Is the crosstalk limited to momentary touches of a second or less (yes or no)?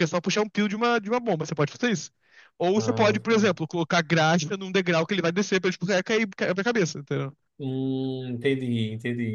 yes